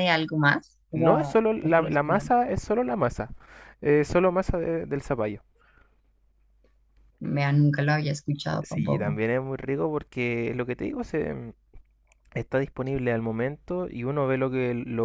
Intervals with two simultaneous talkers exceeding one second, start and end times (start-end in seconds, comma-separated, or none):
0.9-2.3